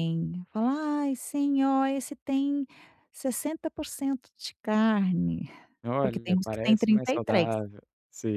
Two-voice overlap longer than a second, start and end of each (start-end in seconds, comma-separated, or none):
6.0-7.5